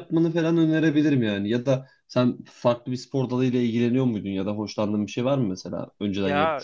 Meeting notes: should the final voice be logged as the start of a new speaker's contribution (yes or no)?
yes